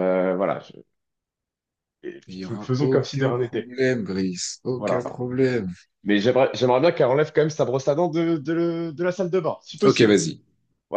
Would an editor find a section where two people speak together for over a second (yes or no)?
yes